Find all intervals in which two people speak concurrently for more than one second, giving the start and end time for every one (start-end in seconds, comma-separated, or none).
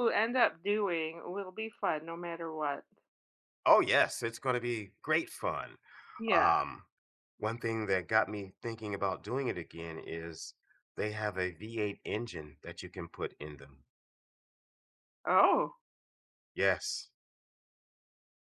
none